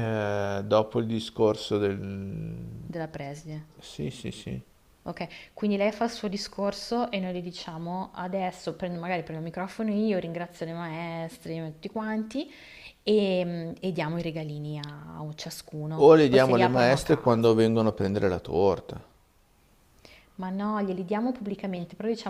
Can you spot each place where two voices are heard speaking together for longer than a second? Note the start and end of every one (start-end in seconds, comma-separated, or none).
16.0-17.5